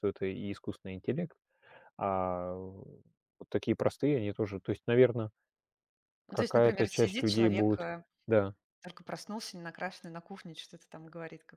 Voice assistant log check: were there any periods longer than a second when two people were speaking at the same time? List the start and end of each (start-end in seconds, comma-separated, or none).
6.3-8.0